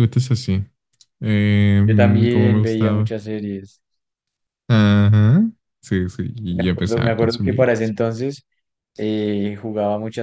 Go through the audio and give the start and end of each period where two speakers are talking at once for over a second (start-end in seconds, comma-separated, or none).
1.8-3.2, 6.5-7.8